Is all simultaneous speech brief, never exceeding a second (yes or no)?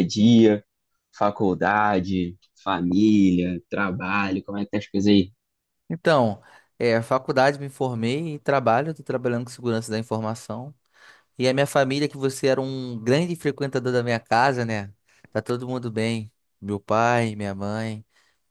yes